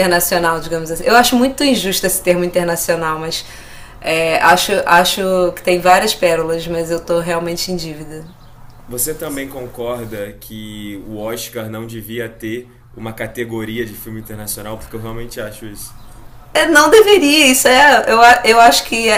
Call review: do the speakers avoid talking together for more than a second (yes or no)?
yes